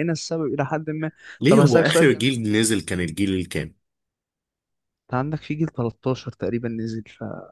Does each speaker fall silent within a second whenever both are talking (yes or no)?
no